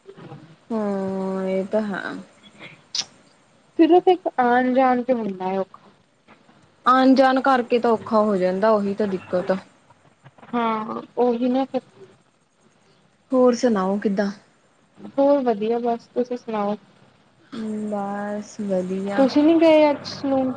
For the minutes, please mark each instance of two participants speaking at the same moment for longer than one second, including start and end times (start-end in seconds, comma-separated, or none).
none